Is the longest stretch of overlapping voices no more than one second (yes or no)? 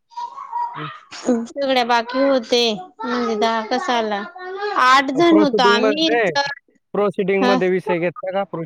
yes